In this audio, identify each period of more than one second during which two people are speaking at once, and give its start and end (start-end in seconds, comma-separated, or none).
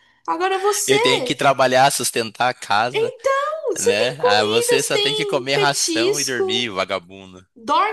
3.8-6.7